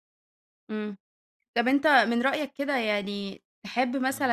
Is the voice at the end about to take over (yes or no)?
no